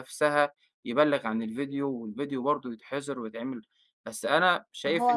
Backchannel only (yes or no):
no